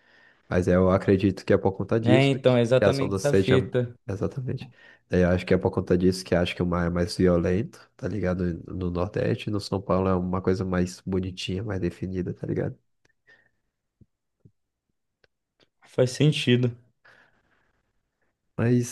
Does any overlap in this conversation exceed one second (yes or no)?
yes